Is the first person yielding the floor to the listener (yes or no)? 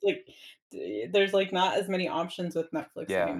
yes